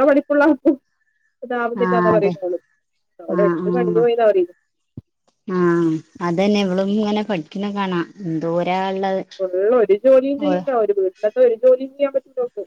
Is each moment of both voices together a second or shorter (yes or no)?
yes